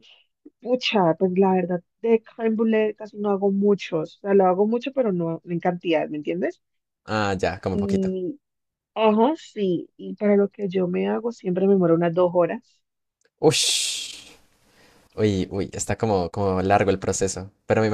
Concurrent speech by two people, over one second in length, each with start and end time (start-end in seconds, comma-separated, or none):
none